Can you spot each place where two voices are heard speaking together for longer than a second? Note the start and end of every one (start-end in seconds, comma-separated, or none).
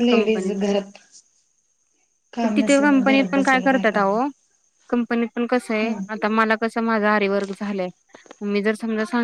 2.6-4.2